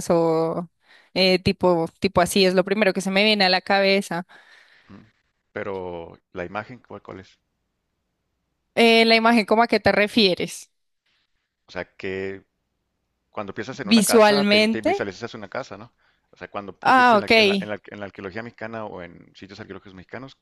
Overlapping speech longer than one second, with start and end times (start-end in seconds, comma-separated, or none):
13.8-15.1